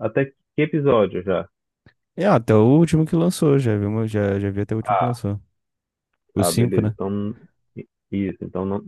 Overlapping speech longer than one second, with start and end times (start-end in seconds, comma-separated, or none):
none